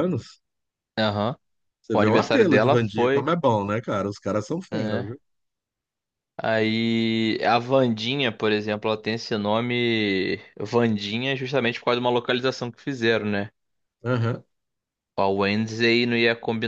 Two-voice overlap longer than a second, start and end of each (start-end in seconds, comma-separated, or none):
1.9-3.3